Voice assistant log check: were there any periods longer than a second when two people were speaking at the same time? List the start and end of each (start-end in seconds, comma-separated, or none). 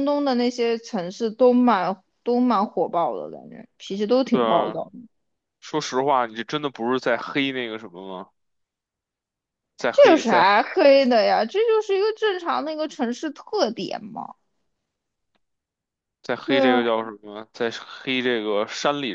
none